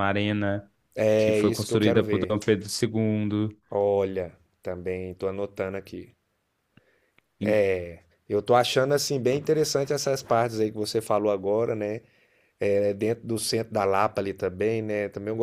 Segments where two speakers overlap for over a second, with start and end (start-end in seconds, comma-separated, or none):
1.2-2.4